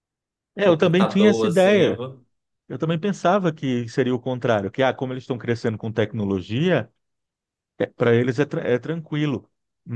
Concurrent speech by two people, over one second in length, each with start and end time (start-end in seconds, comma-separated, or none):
0.6-2.0